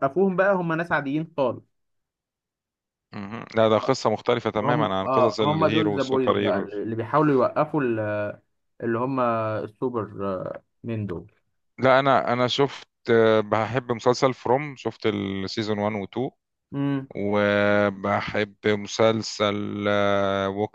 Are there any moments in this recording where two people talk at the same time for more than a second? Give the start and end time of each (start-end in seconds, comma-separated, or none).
4.6-6.7